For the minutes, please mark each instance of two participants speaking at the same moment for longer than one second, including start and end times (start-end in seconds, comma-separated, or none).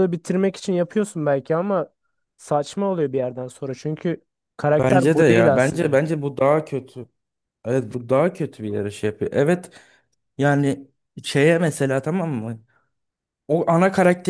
4.7-5.9